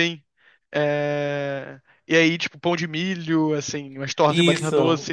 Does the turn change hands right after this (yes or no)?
no